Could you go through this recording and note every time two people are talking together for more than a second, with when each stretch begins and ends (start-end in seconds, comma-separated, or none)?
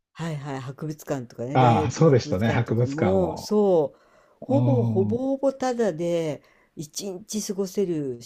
1.5-3.5